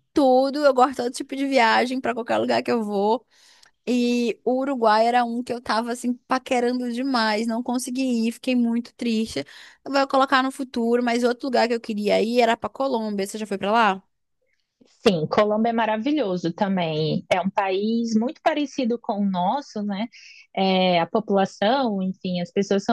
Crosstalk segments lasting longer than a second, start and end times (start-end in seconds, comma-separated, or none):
none